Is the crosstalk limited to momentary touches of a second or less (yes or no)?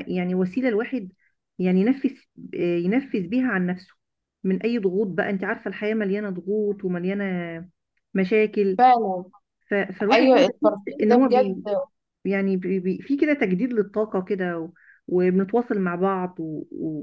no